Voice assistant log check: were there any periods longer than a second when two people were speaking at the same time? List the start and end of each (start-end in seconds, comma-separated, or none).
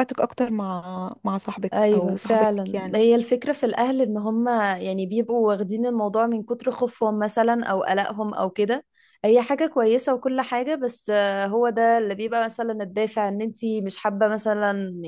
1.7-3.0